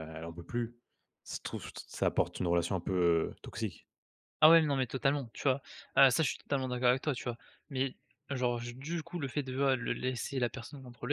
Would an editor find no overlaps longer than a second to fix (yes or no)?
yes